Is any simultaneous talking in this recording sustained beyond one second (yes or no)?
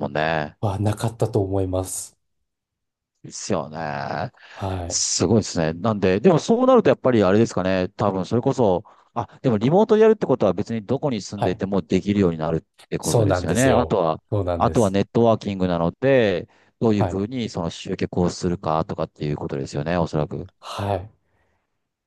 yes